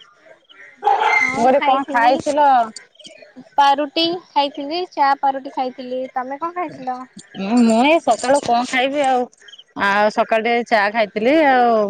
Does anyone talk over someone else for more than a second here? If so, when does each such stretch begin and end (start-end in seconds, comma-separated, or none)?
none